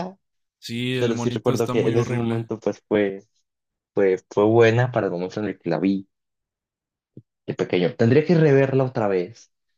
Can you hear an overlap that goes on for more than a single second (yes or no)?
yes